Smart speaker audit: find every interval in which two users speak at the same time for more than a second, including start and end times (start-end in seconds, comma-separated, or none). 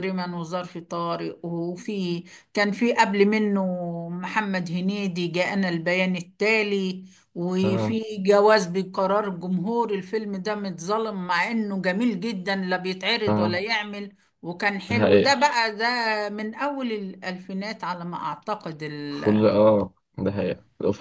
none